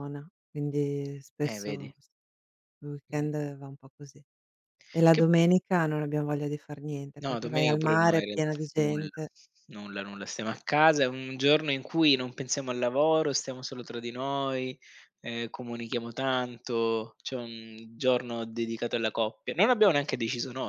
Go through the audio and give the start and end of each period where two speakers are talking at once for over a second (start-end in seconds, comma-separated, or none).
7.2-9.1